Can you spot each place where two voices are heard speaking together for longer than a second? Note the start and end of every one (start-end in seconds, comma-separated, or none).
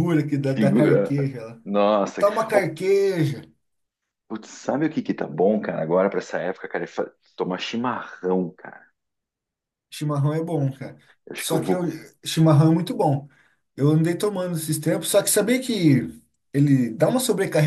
none